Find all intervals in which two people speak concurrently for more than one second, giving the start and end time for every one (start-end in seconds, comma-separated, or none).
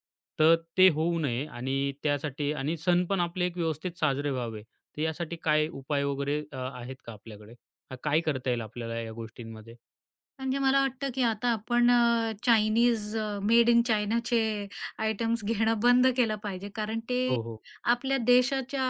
none